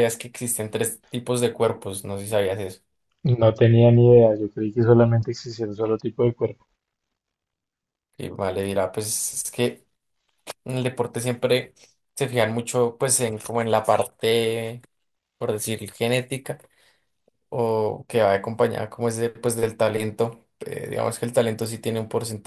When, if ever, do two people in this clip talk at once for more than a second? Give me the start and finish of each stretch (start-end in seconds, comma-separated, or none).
none